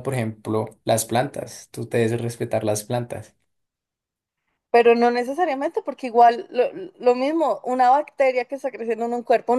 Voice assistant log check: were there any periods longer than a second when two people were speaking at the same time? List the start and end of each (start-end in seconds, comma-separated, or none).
none